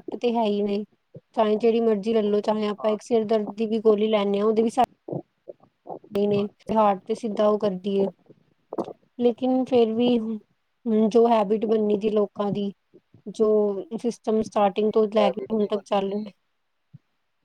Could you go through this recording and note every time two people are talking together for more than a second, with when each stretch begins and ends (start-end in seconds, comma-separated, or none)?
14.4-16.3